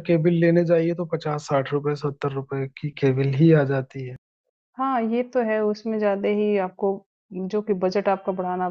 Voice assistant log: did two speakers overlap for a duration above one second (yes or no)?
no